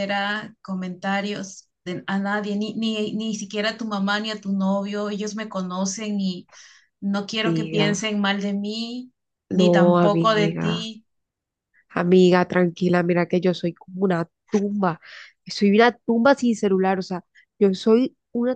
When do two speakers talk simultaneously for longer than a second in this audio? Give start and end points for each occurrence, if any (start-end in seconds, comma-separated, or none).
9.5-10.9